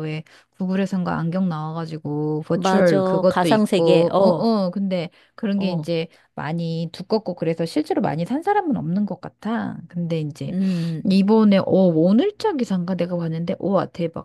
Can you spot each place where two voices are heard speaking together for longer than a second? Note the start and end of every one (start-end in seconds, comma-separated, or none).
2.5-4.5